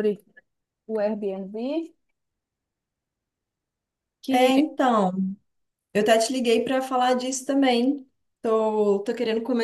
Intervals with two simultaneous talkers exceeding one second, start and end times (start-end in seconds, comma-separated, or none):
none